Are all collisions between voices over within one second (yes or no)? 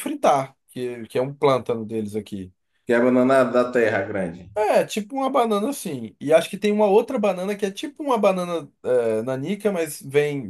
yes